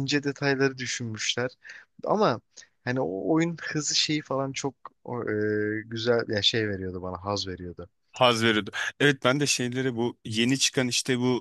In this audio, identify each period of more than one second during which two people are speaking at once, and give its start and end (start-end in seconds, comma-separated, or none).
none